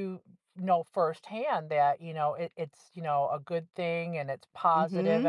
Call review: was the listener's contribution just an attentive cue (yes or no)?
no